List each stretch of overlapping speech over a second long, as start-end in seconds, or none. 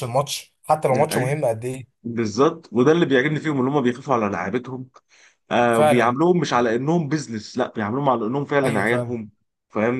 none